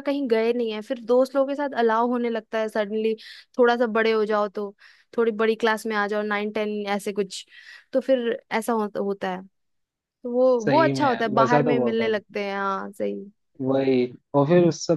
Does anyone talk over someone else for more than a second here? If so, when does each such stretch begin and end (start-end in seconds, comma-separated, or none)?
10.6-12.1